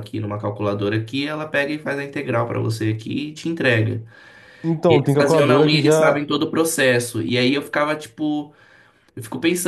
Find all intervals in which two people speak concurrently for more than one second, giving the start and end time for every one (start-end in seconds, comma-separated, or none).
4.9-6.2